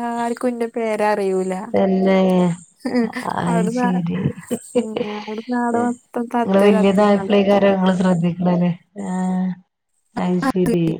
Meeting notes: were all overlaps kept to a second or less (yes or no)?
no